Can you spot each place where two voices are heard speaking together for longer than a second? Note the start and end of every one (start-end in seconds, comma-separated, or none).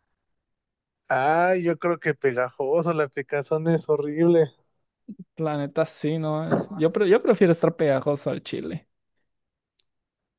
none